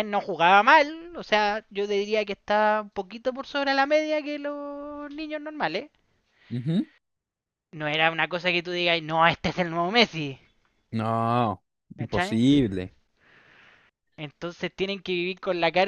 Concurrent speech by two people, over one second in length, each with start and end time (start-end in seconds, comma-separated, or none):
none